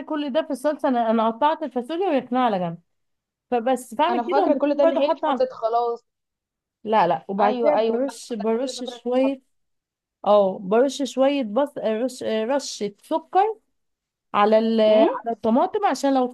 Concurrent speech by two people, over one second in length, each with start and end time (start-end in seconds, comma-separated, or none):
4.1-5.4, 7.4-9.4